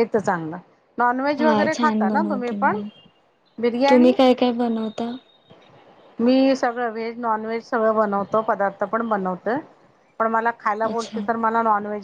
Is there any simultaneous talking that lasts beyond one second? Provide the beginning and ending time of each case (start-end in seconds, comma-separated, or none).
1.4-2.8